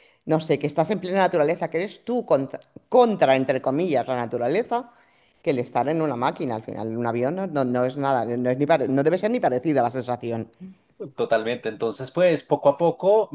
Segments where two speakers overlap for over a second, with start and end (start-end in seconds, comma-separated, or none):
none